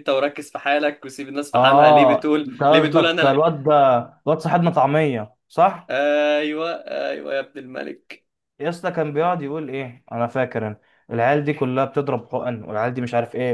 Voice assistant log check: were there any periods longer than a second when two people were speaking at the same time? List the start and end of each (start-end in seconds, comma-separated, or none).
1.5-3.4